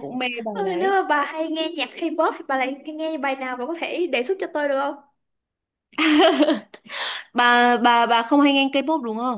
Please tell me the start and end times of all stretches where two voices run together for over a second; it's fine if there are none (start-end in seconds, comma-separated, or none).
none